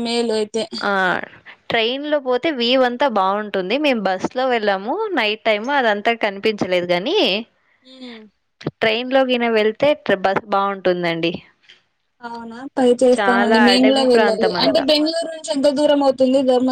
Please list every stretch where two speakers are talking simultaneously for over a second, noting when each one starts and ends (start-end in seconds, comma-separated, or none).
13.2-14.8